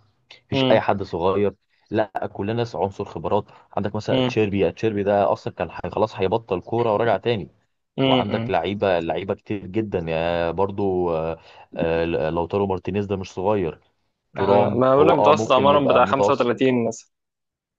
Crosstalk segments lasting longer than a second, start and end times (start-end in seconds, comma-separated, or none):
14.4-16.5